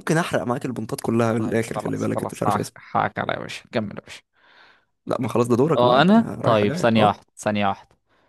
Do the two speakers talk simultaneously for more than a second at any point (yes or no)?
yes